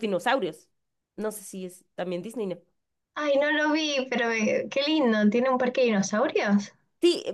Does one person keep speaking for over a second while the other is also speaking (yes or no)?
no